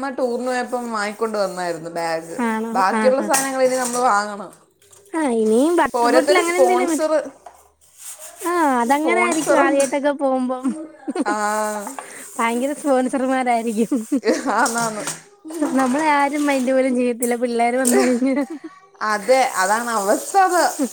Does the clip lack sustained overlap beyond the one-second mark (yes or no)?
yes